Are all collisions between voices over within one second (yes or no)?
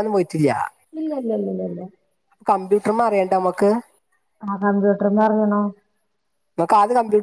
yes